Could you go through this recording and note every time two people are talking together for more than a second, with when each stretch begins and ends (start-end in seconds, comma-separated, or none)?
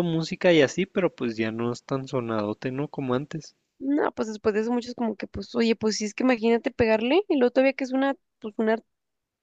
none